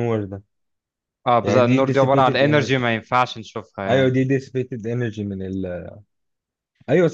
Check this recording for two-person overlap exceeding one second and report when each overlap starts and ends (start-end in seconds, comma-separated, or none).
1.4-3.0